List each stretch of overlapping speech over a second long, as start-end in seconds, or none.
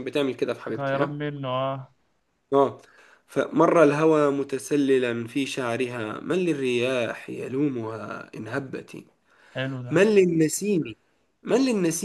none